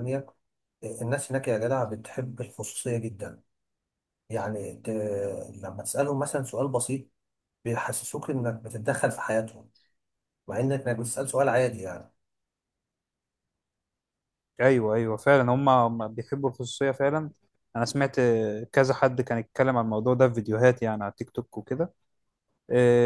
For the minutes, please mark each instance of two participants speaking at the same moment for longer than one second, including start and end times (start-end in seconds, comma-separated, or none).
none